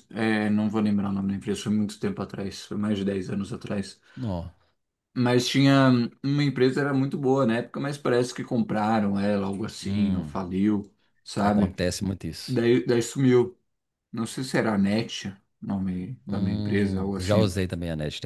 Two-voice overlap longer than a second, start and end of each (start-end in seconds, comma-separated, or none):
16.3-17.6